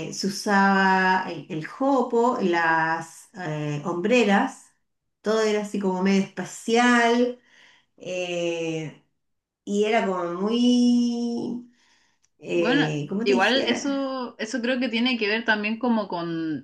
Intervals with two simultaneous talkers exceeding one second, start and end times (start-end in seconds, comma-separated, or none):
12.5-14.0